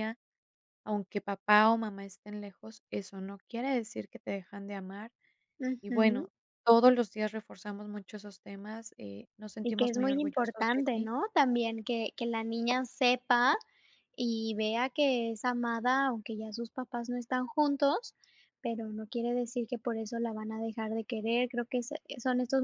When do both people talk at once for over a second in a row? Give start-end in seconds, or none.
9.6-11.1